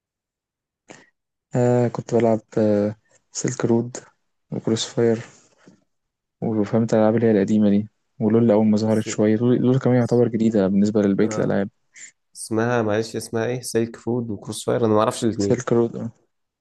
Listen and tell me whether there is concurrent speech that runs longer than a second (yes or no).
no